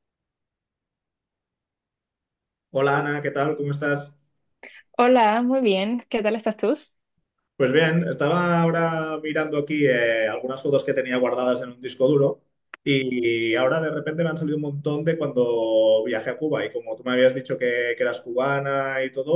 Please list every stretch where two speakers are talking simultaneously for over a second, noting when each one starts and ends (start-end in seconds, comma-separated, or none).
none